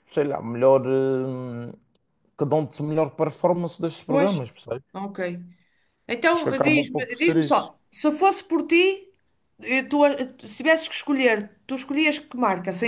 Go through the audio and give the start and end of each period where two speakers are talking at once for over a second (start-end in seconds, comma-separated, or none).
6.3-7.7